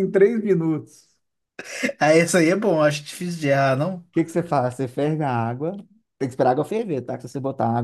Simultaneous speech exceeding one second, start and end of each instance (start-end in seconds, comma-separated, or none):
none